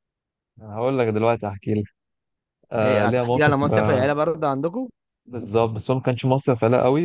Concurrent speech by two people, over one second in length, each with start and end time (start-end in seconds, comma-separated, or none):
2.8-4.1